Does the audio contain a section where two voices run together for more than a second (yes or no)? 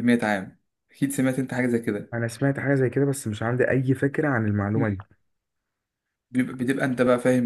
no